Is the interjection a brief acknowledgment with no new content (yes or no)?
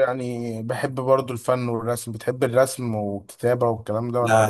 no